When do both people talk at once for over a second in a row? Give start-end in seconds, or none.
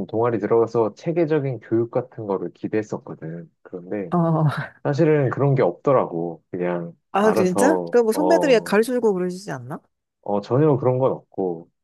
7.1-8.8